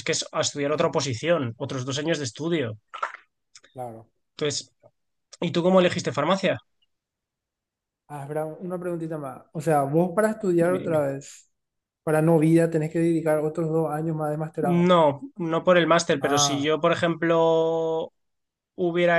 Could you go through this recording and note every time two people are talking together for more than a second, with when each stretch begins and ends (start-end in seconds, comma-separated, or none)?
none